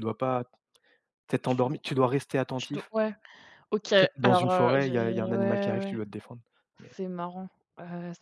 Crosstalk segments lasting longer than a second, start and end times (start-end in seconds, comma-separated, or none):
4.0-6.0